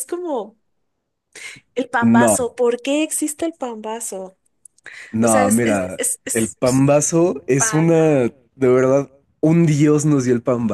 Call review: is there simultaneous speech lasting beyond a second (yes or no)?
yes